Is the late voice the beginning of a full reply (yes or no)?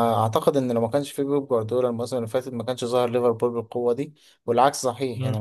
yes